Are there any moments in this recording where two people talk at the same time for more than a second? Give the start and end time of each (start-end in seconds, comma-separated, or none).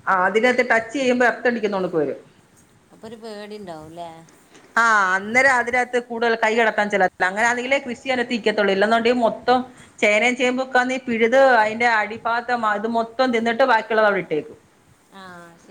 none